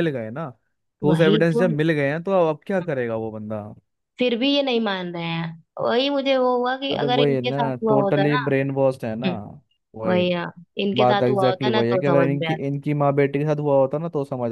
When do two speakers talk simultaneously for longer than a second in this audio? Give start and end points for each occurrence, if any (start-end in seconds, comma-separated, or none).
6.9-8.5, 11.0-12.7